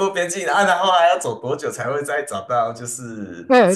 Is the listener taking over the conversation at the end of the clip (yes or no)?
yes